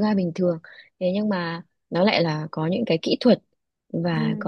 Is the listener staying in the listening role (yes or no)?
yes